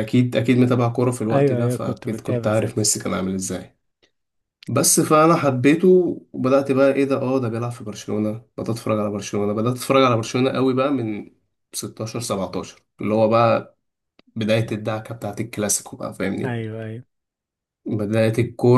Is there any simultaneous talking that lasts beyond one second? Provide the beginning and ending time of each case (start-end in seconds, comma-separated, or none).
1.3-2.9